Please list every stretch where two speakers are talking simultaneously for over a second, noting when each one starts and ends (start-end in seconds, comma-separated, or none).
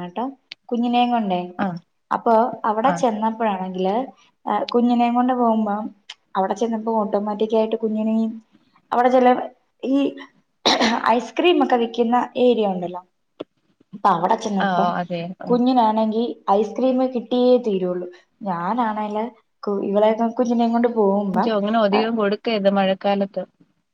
none